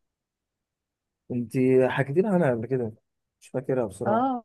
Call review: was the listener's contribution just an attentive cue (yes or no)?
no